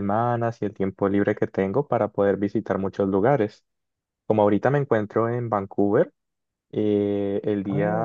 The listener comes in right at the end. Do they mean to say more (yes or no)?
no